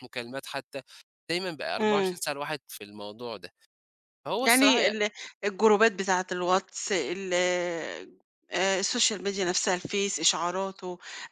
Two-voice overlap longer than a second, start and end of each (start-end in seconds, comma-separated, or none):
none